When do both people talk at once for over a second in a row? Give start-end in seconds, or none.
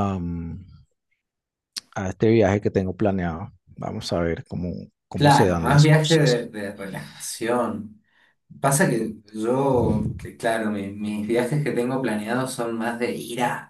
5.1-6.5